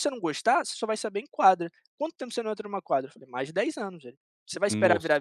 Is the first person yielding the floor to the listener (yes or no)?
no